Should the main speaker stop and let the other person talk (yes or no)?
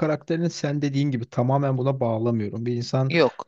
no